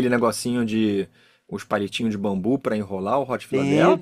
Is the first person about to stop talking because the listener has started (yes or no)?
yes